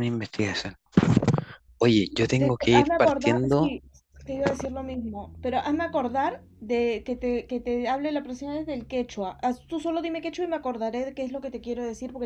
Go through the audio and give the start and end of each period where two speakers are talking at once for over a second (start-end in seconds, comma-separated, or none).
2.4-3.7